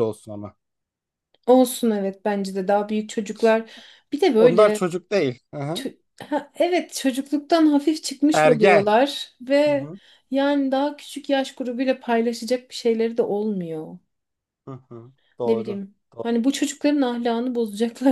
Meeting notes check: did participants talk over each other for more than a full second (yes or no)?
no